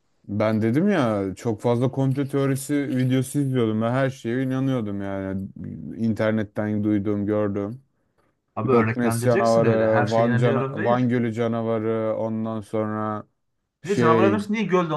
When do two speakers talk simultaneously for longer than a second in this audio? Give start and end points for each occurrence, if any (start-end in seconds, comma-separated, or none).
8.7-11.1